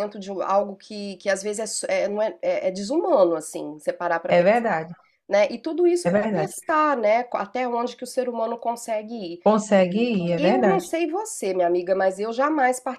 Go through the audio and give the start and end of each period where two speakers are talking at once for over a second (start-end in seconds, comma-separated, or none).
none